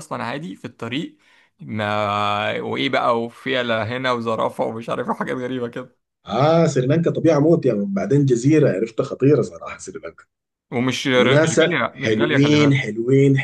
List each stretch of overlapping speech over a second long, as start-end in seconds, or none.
11.1-12.8